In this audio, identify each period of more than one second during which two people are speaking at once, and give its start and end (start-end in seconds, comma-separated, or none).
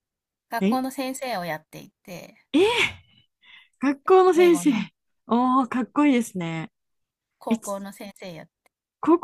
none